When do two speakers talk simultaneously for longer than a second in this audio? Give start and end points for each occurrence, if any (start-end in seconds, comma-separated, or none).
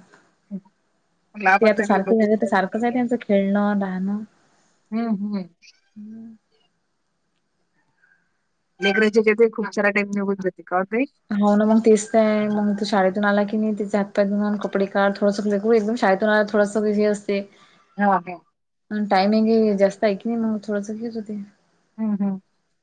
1.6-3.0